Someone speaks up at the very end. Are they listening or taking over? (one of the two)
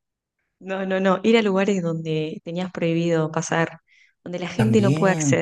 taking over